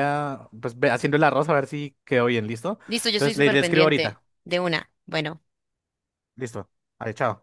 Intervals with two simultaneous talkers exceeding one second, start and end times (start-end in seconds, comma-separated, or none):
2.9-4.2